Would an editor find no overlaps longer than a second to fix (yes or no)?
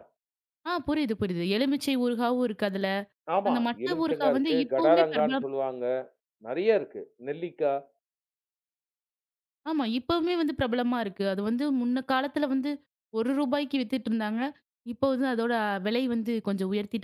no